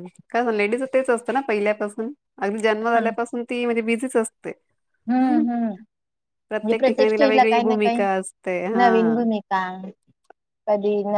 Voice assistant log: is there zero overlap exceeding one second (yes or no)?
no